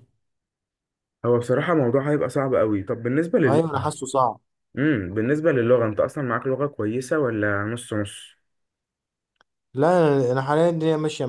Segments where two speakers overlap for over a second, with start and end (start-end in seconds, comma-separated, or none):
none